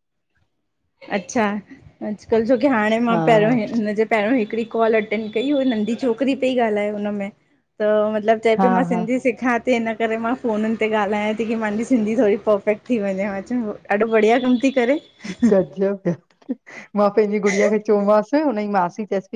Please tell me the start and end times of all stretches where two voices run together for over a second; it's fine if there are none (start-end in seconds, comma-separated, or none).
none